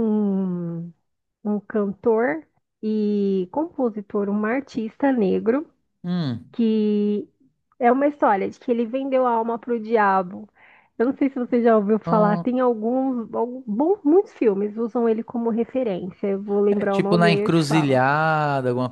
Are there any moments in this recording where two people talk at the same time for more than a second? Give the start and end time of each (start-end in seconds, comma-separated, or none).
16.7-18.0